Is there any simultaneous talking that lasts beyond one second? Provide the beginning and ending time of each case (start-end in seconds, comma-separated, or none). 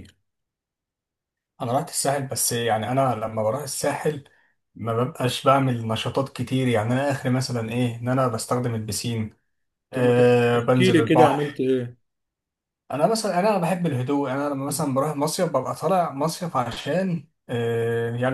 9.9-11.6